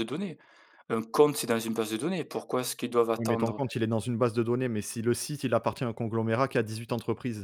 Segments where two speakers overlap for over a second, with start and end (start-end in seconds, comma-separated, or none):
none